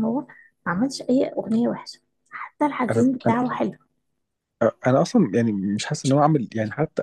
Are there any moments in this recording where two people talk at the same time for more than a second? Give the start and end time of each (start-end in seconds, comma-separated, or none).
none